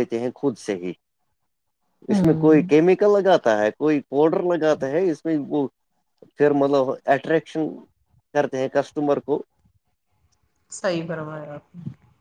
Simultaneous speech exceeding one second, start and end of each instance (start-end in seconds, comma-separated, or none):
none